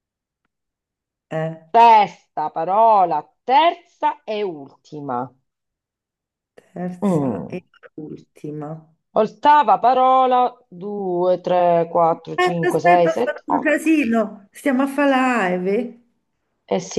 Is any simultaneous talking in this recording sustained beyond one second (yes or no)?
yes